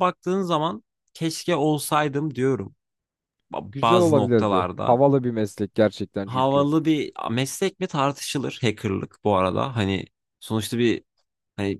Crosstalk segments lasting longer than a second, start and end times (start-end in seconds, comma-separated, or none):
3.7-5.0